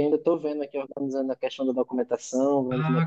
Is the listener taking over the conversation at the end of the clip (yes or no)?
yes